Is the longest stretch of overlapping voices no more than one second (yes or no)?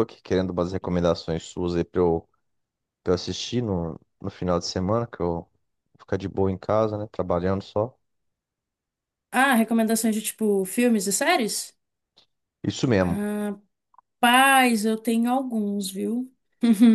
yes